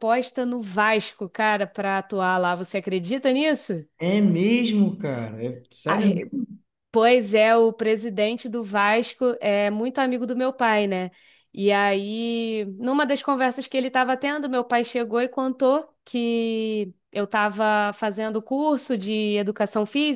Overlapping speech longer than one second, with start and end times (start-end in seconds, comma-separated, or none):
none